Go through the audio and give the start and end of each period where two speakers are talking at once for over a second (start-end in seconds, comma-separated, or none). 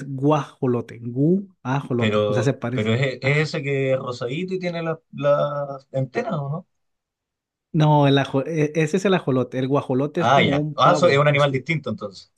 1.9-3.5, 10.2-11.7